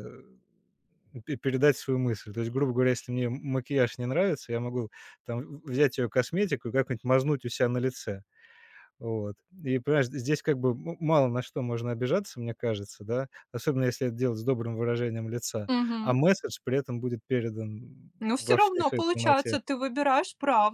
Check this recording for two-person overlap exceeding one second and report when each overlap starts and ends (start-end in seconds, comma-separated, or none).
18.2-19.6